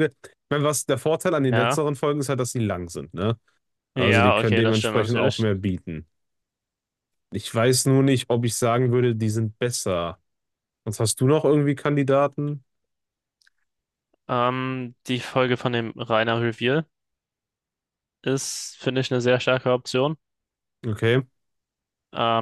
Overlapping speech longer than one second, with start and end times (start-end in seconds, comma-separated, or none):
4.0-5.5